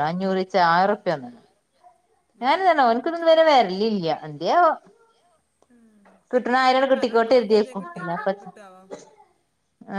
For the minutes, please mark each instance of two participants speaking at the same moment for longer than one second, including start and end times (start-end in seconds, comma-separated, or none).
6.8-8.5